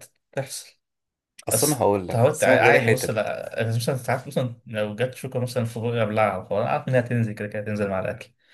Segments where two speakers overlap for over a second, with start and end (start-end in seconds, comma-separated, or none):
1.5-3.3